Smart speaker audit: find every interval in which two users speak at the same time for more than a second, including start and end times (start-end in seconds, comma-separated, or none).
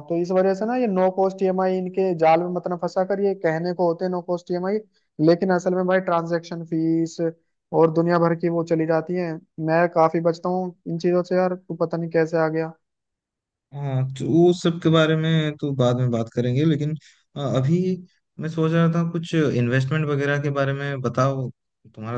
none